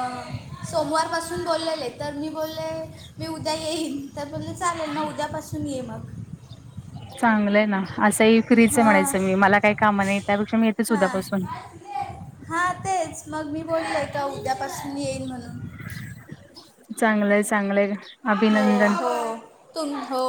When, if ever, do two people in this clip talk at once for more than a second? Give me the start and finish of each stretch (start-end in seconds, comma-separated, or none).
none